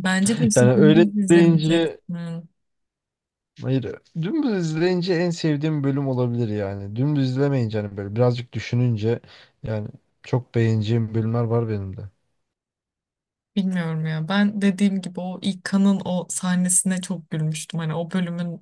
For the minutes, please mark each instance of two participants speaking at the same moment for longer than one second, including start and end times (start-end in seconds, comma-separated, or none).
0.5-2.0